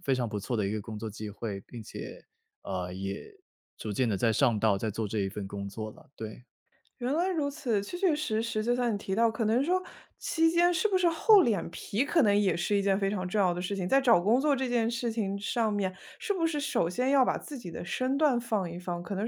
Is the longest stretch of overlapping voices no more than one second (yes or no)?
yes